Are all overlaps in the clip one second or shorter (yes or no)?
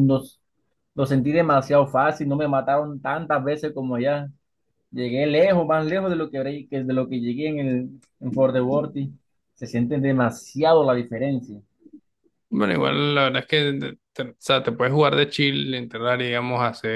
yes